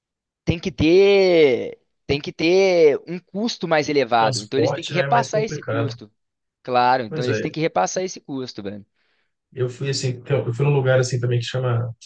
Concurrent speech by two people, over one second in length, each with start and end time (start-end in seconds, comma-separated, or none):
4.2-5.9